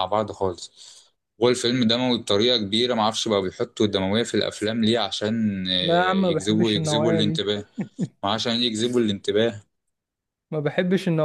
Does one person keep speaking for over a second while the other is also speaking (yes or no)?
yes